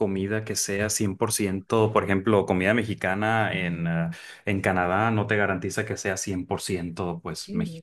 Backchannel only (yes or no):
no